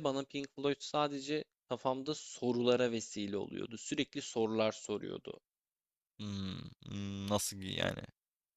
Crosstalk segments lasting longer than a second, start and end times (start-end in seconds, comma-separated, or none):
none